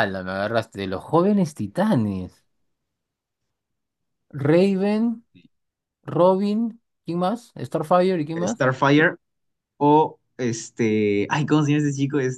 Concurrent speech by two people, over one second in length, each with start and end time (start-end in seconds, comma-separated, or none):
none